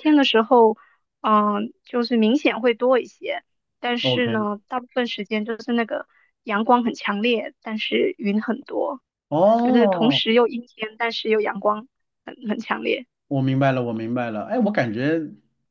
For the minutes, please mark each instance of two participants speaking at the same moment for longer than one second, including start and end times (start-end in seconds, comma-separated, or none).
none